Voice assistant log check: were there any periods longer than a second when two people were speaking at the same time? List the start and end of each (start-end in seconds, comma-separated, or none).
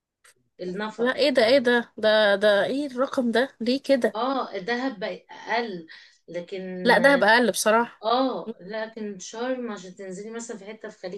none